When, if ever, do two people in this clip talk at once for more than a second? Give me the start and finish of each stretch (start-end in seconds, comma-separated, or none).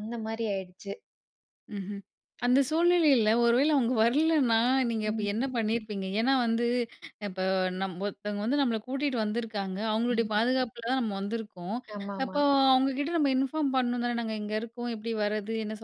none